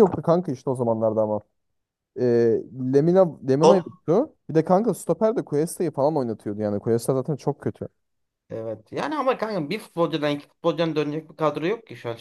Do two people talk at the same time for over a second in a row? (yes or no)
no